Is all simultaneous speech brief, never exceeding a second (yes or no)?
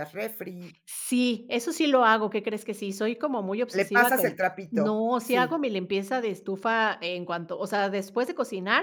no